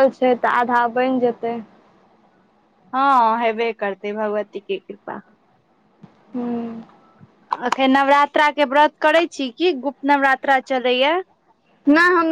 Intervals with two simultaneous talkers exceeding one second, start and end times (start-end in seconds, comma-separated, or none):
none